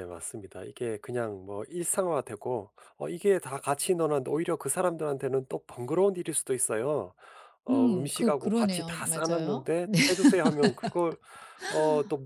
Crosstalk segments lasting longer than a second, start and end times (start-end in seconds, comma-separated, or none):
7.7-9.7